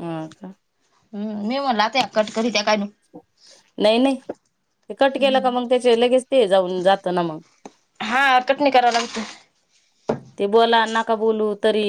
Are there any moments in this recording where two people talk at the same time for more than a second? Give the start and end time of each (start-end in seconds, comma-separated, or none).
none